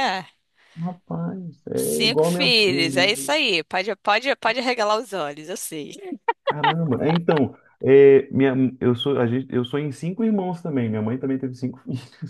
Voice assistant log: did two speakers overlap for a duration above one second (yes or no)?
yes